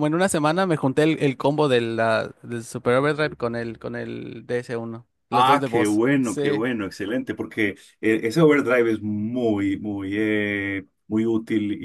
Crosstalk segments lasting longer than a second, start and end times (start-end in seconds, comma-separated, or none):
5.3-6.6